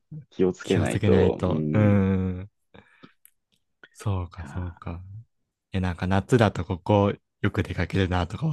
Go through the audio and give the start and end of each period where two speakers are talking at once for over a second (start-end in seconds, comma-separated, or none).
0.6-2.0